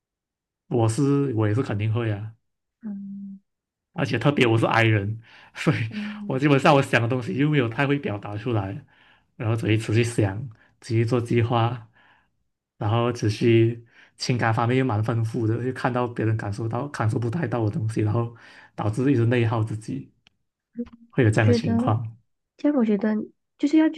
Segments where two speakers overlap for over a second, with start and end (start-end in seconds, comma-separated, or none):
none